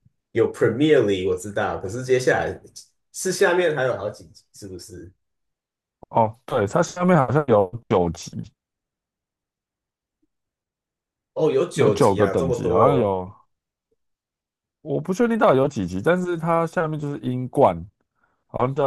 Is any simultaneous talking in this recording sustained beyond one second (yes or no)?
yes